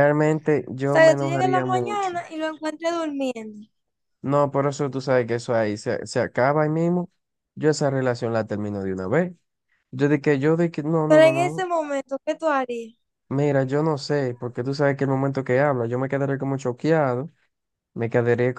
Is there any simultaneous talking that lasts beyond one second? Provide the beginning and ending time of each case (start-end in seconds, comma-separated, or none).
0.8-2.2